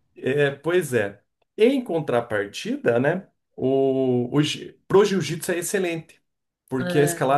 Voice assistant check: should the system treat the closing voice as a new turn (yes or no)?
no